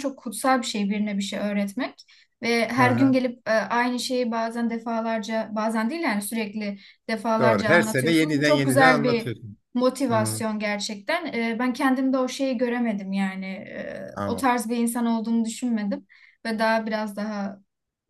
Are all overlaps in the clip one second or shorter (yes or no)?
no